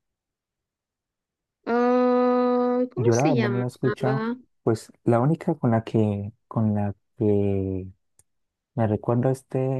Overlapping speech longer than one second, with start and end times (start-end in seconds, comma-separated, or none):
3.0-4.4